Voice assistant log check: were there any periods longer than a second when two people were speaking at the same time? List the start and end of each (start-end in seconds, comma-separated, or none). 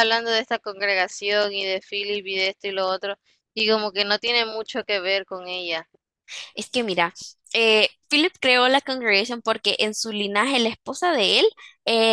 none